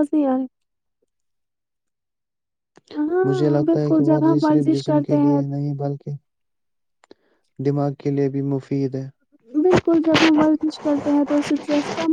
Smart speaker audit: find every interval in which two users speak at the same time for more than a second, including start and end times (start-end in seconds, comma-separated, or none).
3.3-5.4